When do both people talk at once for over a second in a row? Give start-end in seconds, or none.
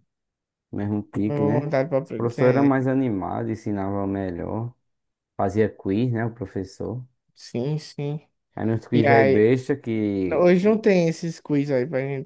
1.3-2.8